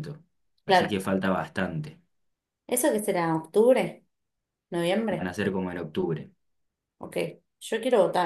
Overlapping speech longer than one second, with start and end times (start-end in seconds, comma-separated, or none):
none